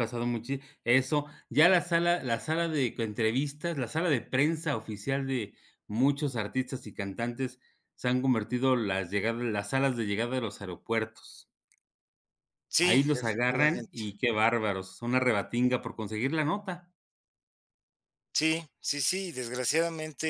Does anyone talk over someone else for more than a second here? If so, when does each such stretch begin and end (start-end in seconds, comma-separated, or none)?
12.8-14.0